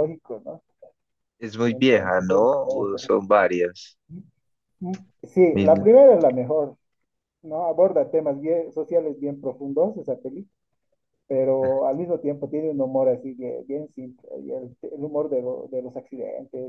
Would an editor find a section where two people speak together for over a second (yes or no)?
yes